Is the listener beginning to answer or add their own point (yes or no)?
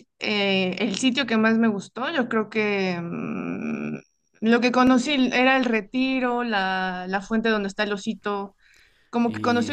yes